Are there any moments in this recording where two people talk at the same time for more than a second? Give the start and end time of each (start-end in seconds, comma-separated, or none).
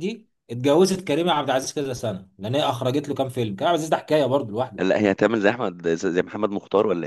none